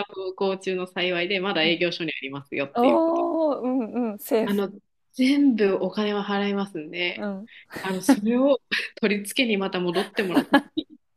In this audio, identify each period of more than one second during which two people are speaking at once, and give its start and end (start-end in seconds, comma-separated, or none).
none